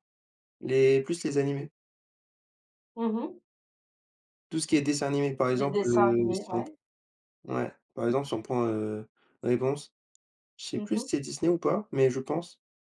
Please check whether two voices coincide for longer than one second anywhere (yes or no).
yes